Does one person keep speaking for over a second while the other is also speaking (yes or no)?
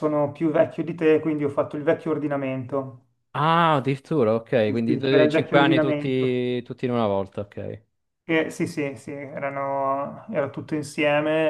yes